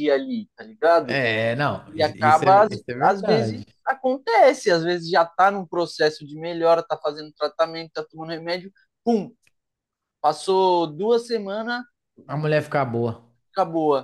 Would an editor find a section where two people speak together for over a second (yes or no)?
yes